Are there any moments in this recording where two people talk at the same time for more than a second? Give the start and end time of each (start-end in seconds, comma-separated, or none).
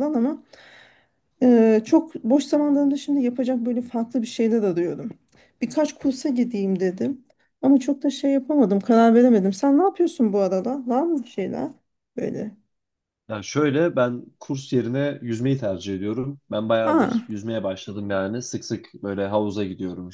none